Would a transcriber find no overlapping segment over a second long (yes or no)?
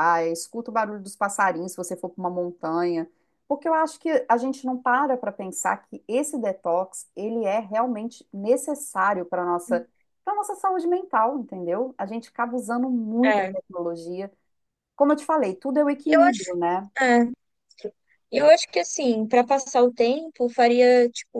yes